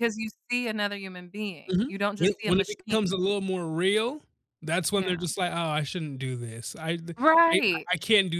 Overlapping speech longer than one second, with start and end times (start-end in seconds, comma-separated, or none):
1.7-3.2